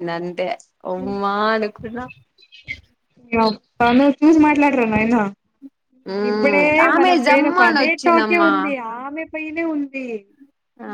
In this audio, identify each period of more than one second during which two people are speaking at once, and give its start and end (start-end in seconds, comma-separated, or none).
6.3-8.5